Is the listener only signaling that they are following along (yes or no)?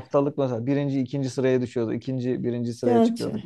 yes